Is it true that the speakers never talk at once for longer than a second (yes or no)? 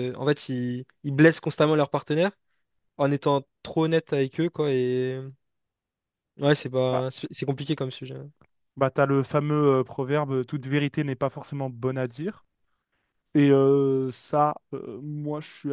yes